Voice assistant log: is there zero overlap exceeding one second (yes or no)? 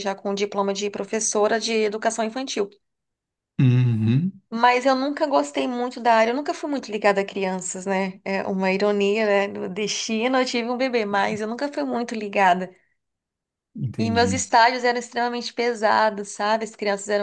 yes